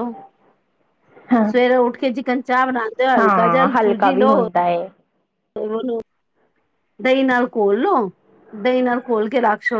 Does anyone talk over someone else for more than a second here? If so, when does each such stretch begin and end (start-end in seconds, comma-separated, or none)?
none